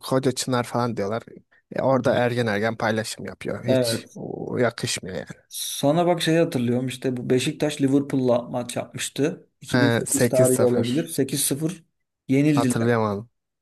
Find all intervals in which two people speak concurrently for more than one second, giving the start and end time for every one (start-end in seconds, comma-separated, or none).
9.7-11.1